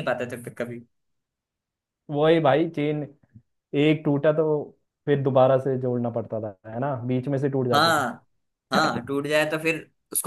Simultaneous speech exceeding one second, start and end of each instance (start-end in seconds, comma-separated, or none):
none